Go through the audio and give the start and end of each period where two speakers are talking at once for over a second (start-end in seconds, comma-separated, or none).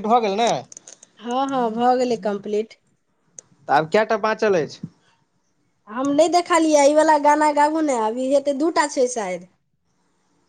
none